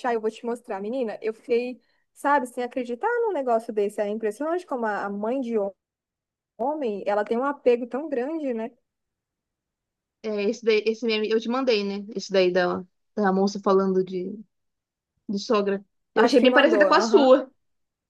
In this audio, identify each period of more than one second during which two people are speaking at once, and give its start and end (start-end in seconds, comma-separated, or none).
16.1-17.4